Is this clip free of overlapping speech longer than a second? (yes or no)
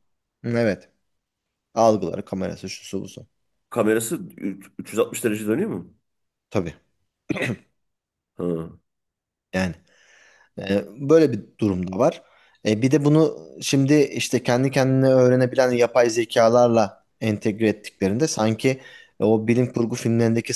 yes